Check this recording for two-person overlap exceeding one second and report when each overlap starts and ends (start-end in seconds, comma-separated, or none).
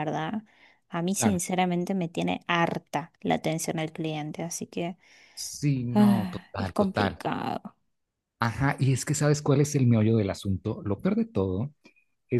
5.9-7.2